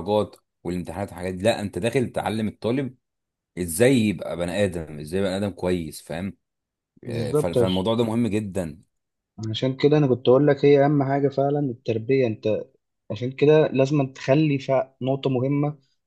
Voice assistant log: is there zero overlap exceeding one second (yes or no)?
yes